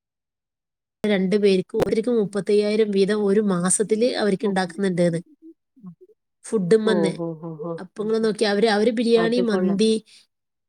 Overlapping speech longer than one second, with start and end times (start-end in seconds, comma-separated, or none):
none